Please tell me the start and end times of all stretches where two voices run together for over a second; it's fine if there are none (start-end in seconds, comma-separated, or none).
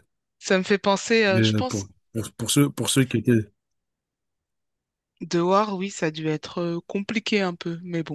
none